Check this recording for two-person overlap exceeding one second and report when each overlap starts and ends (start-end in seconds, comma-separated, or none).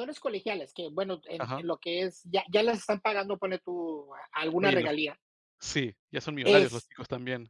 none